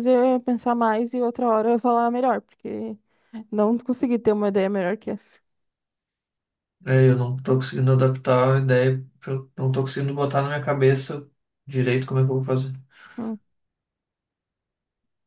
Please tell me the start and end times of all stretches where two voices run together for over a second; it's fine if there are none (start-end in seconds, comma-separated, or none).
none